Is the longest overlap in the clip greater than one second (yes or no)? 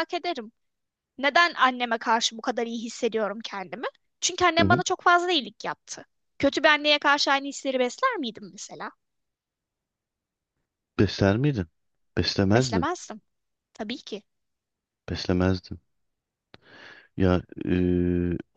no